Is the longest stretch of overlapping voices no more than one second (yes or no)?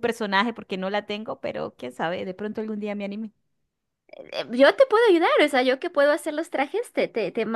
yes